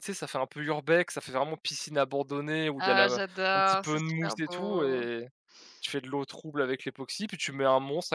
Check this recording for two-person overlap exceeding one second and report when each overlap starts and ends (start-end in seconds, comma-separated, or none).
2.8-5.0